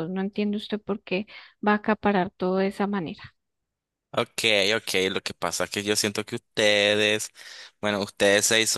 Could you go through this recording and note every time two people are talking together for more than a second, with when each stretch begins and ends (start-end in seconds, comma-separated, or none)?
none